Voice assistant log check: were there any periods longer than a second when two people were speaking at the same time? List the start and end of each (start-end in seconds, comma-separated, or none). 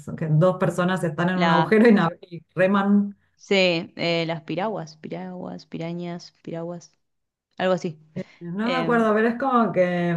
none